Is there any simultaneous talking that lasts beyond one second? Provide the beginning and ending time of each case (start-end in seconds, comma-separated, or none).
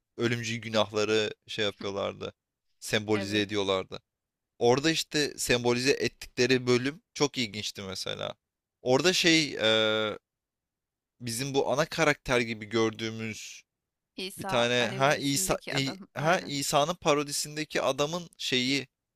14.4-16.5